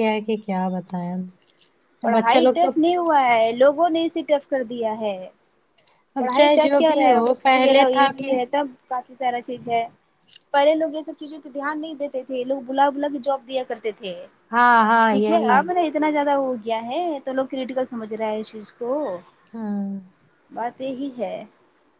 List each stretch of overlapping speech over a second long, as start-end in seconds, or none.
6.2-8.3